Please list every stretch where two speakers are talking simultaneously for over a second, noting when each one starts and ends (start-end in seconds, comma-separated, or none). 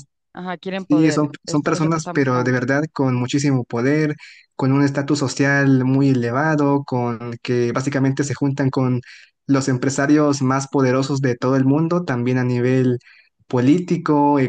0.9-2.6